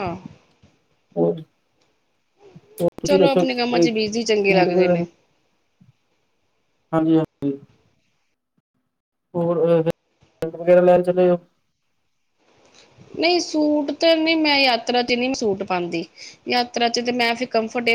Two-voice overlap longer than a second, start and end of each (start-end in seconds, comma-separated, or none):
3.0-5.0